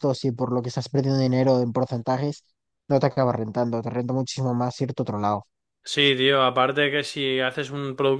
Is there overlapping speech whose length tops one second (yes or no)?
no